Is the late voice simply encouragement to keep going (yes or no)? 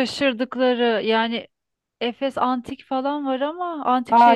no